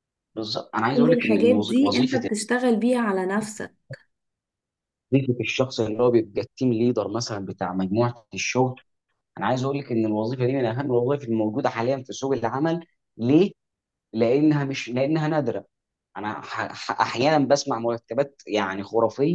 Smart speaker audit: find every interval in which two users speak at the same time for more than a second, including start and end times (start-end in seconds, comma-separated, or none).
0.9-2.3